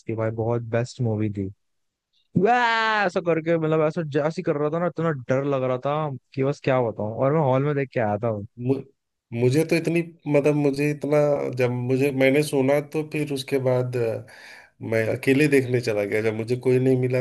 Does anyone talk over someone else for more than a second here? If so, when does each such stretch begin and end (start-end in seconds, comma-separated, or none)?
none